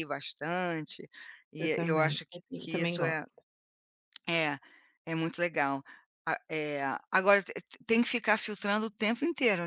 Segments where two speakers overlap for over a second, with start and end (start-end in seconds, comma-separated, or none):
1.6-3.2